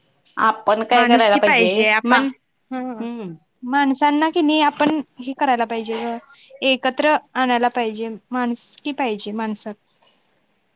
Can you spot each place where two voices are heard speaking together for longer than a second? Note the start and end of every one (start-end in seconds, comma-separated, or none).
none